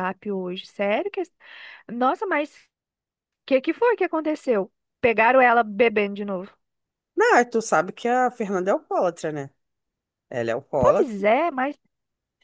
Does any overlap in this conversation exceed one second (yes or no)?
no